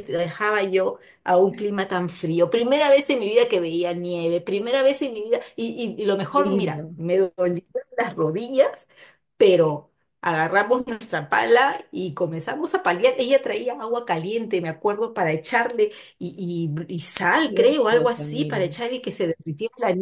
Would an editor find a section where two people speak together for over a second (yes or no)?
yes